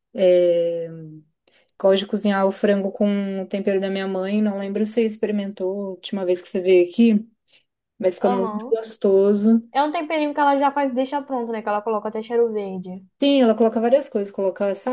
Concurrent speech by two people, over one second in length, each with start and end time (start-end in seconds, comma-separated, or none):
none